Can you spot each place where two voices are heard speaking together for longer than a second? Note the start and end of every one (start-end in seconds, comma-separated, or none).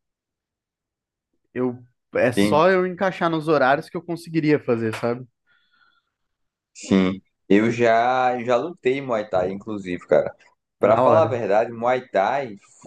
none